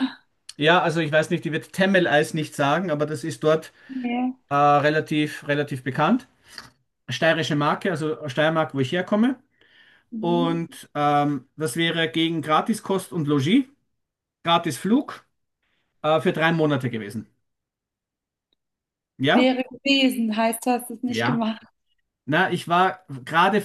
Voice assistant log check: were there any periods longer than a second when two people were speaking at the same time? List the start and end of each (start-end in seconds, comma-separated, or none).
none